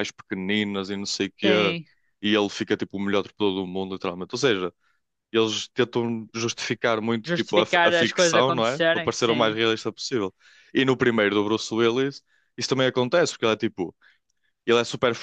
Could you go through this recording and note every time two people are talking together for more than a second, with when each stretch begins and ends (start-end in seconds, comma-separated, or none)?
7.2-9.6